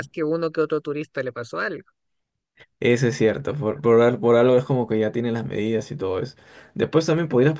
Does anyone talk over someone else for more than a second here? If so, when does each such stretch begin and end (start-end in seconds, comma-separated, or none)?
none